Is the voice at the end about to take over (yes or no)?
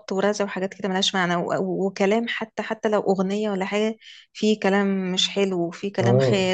yes